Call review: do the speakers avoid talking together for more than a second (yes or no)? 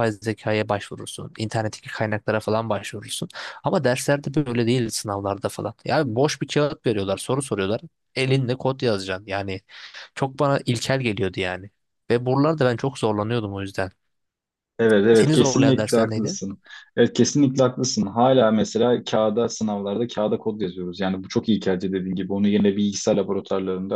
no